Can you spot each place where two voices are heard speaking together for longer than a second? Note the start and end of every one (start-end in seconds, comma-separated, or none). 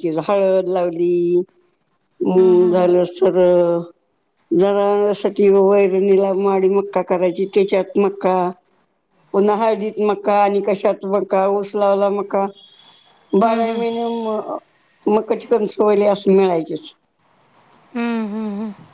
none